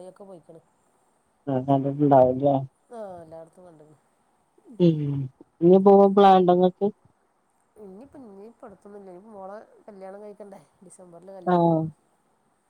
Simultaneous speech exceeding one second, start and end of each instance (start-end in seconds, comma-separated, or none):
none